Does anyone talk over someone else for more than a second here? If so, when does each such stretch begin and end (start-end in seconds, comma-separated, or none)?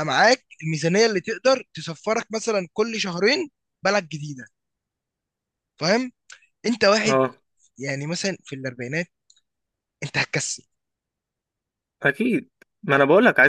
none